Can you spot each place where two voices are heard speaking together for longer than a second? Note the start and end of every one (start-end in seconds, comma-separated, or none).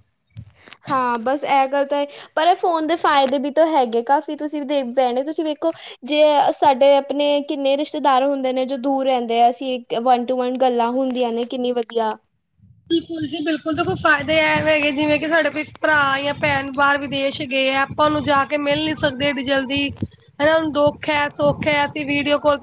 none